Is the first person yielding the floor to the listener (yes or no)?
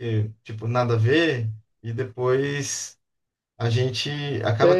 yes